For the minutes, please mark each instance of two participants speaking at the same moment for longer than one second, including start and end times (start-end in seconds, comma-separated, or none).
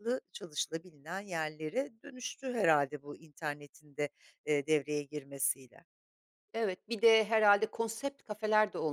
none